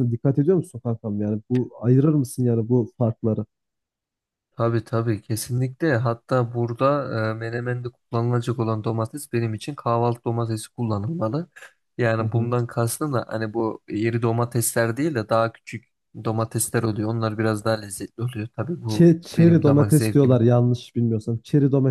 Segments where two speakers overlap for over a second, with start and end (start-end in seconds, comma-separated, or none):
18.9-20.4